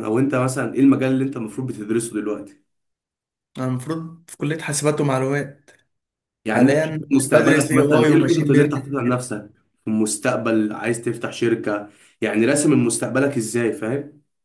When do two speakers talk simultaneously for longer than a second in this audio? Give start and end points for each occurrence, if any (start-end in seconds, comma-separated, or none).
6.5-9.0